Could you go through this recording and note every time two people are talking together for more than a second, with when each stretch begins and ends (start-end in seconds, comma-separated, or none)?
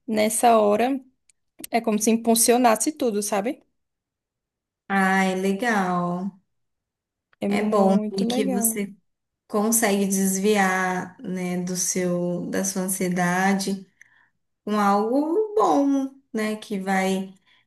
7.5-8.8